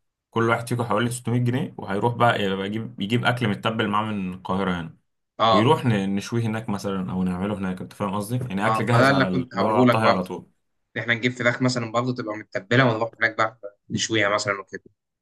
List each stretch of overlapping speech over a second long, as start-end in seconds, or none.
8.6-10.3